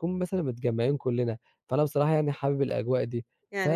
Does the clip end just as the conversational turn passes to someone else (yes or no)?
yes